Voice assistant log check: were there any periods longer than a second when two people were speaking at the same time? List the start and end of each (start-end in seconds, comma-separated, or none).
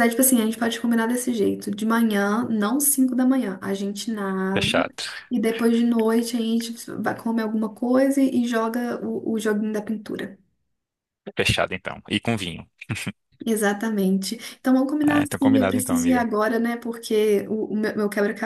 15.0-16.3